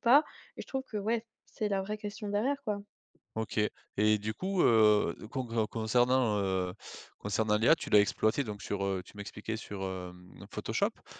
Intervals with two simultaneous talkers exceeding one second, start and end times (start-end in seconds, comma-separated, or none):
none